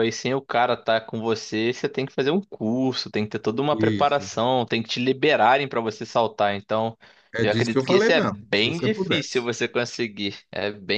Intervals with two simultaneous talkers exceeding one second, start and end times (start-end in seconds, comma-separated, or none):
7.4-9.5